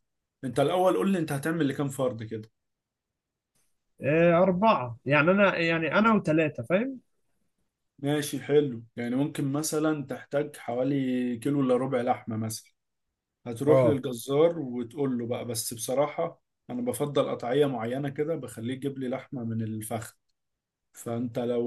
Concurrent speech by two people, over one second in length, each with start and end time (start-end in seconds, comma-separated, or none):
none